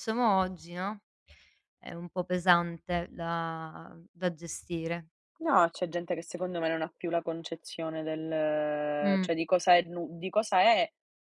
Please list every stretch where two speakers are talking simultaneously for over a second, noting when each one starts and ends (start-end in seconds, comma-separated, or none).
none